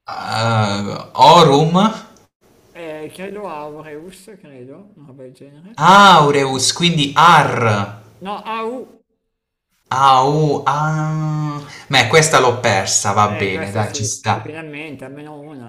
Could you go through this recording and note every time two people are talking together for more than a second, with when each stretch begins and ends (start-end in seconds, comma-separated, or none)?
13.2-14.6